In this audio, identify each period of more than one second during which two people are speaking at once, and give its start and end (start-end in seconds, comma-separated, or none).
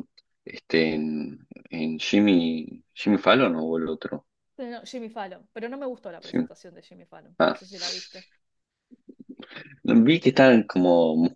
none